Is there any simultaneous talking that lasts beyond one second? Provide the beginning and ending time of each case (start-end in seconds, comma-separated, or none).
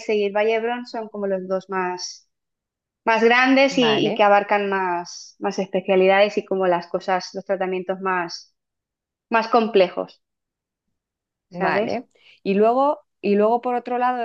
none